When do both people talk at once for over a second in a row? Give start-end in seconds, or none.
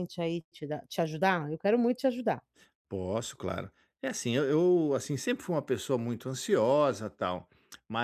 none